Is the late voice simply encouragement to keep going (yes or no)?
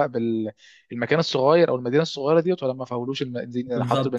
no